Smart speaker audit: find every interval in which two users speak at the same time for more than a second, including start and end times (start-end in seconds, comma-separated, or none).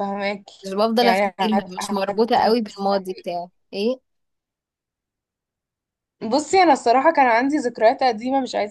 0.6-3.3